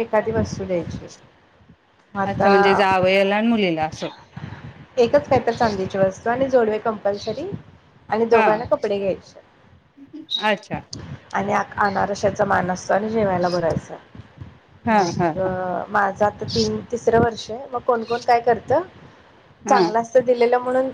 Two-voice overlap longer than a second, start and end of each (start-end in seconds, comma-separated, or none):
none